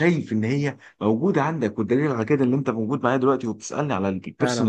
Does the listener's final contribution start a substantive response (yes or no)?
yes